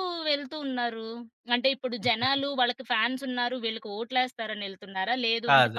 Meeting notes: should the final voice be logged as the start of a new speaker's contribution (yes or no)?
no